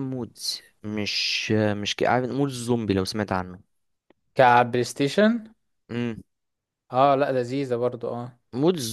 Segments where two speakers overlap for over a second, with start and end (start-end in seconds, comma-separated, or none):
none